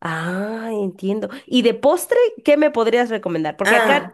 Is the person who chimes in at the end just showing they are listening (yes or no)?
yes